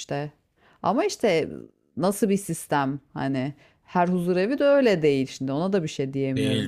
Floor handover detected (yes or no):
yes